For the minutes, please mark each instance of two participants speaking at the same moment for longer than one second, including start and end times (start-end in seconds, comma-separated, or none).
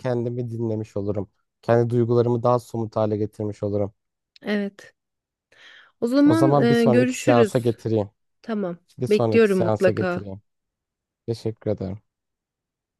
6.2-7.8, 9.0-10.3